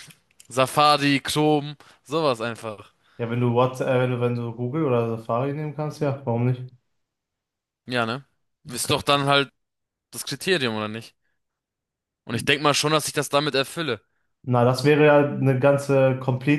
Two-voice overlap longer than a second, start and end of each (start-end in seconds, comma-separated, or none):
none